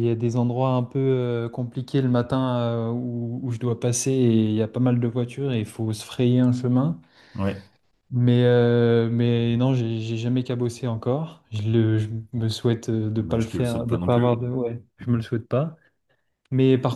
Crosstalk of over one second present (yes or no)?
yes